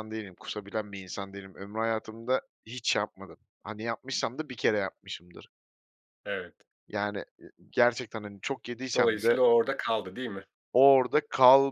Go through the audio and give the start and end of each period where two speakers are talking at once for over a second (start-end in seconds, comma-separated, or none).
none